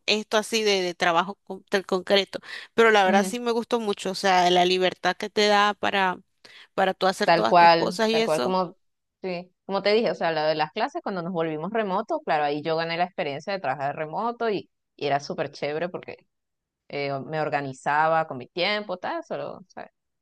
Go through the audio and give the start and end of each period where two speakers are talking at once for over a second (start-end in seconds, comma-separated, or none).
7.2-8.6